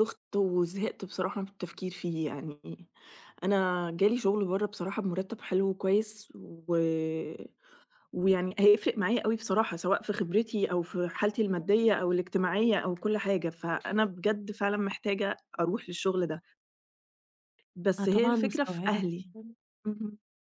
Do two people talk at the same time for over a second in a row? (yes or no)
yes